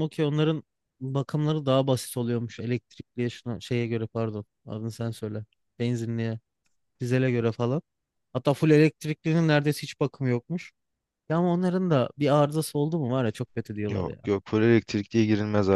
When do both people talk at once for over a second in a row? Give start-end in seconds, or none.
none